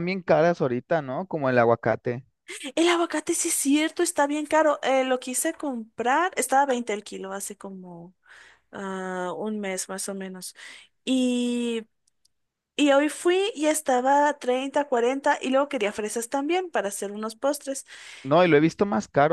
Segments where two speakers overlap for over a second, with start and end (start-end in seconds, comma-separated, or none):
none